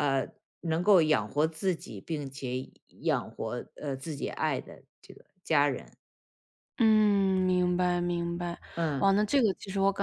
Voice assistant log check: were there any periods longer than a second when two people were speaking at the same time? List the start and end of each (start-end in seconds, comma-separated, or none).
none